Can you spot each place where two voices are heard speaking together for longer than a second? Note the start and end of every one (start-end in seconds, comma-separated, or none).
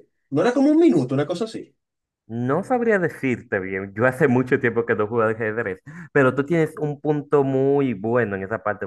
none